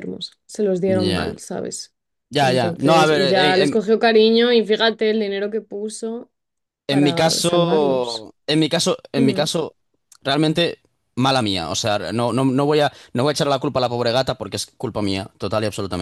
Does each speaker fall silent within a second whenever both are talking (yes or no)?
no